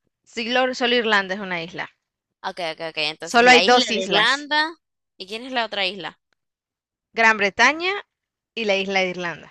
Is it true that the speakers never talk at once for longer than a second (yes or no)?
no